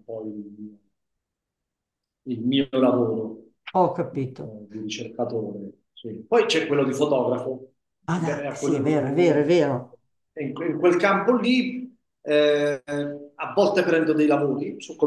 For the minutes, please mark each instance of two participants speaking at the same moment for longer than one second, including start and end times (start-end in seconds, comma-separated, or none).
8.1-9.8